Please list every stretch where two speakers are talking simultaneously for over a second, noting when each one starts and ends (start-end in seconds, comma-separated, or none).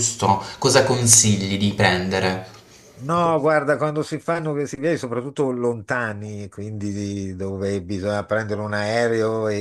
none